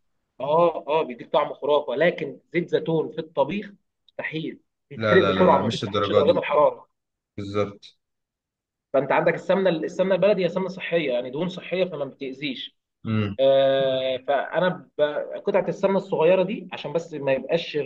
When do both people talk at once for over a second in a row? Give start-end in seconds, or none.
5.0-6.4